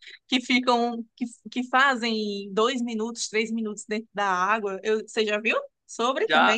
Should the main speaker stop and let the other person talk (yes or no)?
yes